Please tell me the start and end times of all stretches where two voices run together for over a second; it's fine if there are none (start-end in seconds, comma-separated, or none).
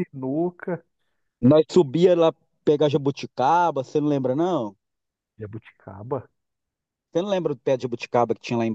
none